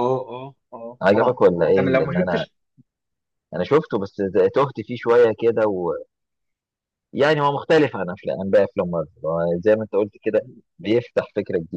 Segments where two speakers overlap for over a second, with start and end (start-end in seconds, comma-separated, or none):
1.0-2.5